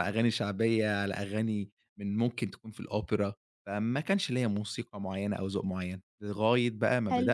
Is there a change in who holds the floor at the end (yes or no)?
no